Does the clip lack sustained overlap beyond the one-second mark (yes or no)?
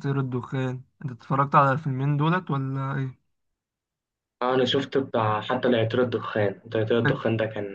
yes